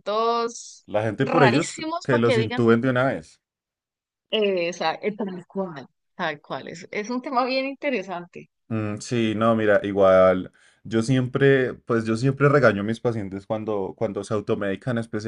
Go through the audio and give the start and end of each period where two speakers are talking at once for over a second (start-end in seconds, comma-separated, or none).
0.8-2.6